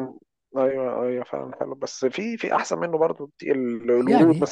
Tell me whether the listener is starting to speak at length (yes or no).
no